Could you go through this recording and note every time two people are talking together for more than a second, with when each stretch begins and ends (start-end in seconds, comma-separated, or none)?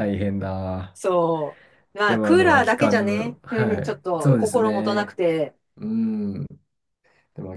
2.1-5.2